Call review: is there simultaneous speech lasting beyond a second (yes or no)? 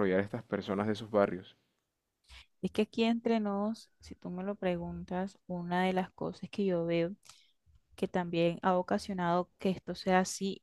no